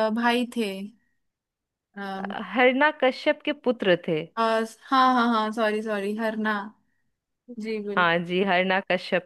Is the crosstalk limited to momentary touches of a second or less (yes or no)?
yes